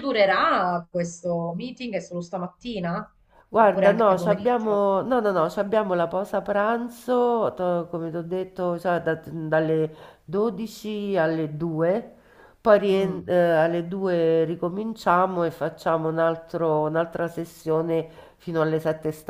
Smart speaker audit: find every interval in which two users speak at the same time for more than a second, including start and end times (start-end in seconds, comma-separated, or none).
3.6-4.8